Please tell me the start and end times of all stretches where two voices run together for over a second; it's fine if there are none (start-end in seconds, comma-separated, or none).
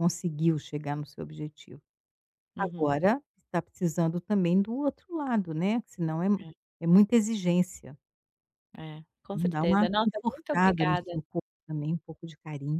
9.3-11.1